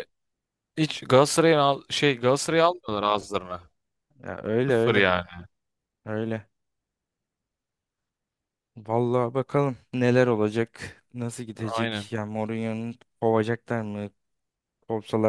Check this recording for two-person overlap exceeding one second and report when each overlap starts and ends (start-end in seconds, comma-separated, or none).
none